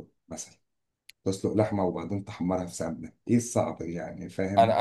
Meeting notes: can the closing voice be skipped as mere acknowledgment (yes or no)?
no